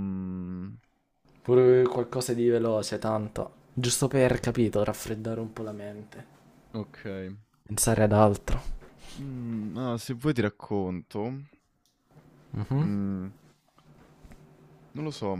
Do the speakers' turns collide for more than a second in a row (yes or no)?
no